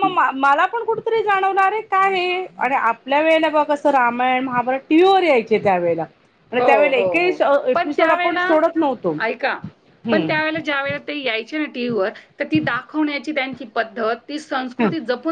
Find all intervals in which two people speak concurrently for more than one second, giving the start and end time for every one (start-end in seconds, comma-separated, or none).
6.7-8.5